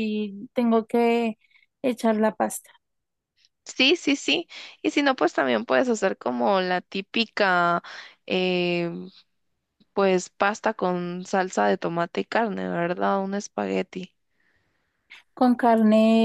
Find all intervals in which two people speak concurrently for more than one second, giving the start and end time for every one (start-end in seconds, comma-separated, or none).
none